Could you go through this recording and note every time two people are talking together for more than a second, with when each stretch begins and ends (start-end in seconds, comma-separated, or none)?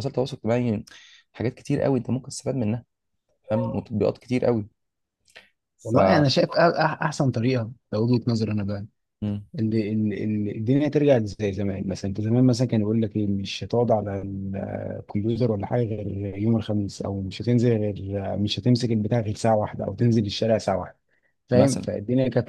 none